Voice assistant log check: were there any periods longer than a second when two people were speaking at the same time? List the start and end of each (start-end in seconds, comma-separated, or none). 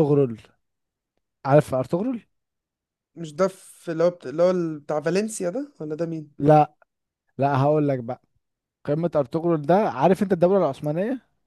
none